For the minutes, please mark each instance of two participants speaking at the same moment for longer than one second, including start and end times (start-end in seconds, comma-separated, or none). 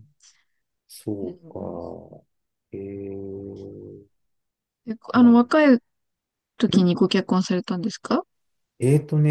none